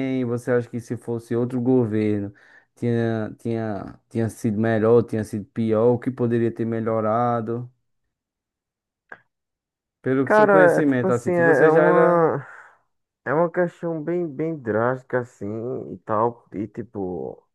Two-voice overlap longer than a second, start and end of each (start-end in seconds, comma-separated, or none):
10.2-12.3